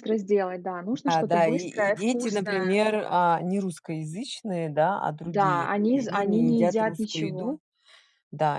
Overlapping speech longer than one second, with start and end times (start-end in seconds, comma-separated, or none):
1.1-2.8, 5.2-7.6